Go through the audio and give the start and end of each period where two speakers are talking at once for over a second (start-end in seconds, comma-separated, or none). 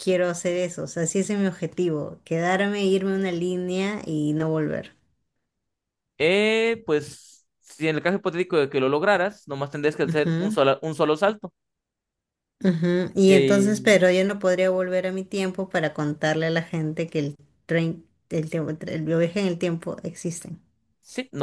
none